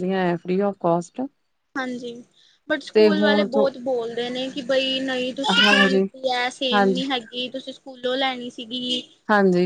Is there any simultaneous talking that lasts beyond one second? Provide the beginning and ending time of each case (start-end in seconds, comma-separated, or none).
none